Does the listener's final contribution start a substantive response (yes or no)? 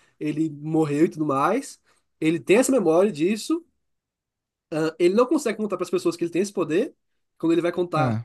no